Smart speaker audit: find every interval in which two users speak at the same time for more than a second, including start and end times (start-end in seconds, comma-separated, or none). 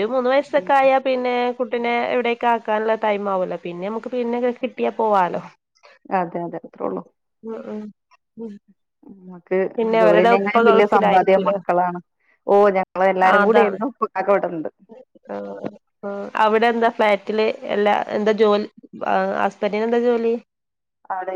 10.0-11.5